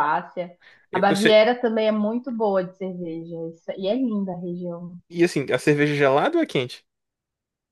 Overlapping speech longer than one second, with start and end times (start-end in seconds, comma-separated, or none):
none